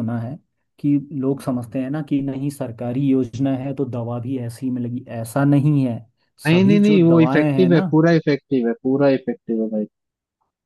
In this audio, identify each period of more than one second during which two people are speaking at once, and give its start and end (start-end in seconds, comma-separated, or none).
6.5-7.8